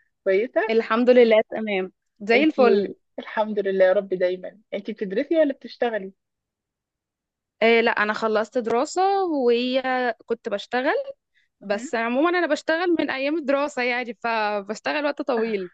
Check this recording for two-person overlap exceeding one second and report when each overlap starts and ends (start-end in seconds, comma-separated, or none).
none